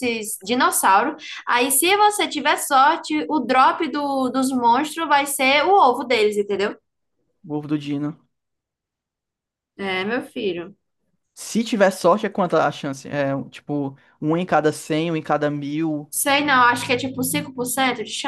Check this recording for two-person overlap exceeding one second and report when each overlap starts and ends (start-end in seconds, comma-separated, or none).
none